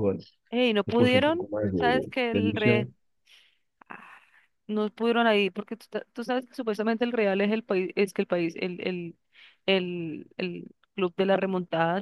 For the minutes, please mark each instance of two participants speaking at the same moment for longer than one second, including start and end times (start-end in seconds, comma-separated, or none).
0.5-2.9